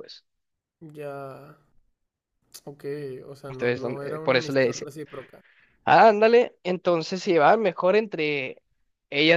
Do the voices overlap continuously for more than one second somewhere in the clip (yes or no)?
yes